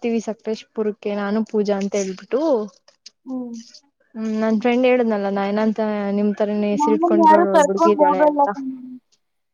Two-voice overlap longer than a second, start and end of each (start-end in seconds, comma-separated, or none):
6.8-8.5